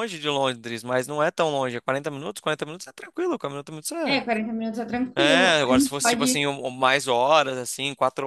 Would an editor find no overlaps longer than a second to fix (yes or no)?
no